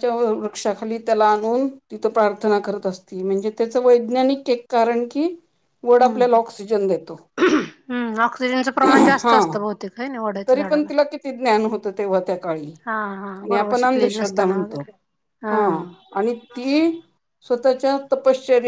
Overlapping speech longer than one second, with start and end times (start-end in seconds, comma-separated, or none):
13.4-14.8